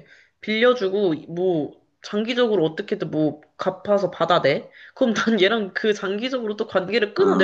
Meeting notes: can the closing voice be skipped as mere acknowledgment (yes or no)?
yes